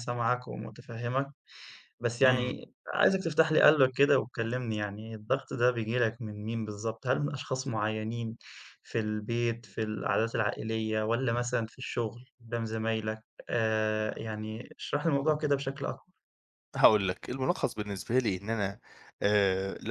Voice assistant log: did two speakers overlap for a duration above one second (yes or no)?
no